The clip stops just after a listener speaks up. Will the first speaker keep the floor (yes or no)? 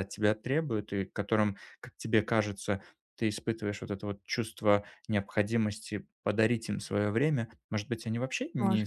yes